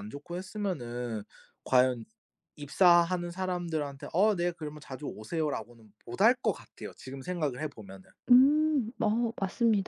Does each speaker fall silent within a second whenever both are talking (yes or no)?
yes